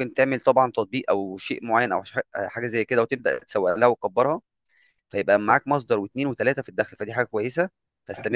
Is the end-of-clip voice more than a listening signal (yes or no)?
yes